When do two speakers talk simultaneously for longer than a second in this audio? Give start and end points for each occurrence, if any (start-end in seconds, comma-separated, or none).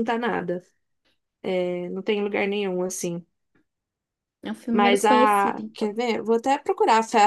4.7-5.9